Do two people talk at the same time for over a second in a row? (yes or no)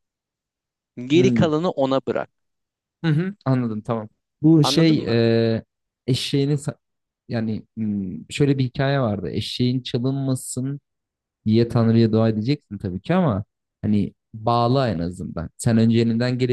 no